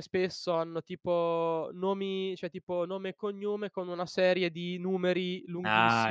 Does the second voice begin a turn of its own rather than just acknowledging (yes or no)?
yes